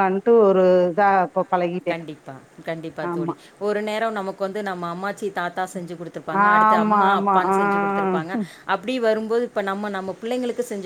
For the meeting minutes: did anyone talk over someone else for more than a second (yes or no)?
yes